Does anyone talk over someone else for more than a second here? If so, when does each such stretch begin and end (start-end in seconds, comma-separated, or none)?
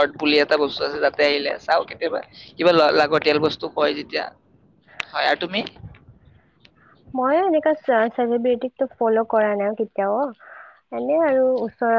none